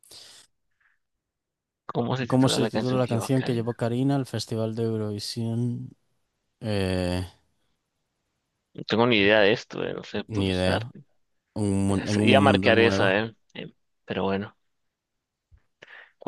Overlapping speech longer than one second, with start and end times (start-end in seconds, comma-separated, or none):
2.3-3.8, 11.9-13.2